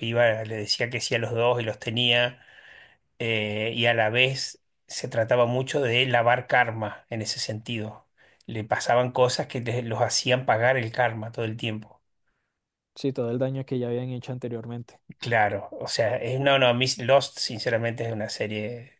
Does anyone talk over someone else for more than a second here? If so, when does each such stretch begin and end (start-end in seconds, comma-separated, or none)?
none